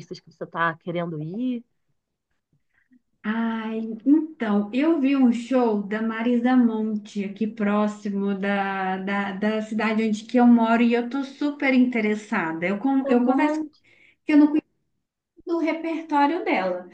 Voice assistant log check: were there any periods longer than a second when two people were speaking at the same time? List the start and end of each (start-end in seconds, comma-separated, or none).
none